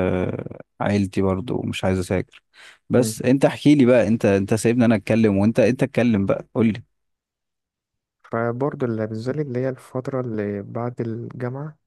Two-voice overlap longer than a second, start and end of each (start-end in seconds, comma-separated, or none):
none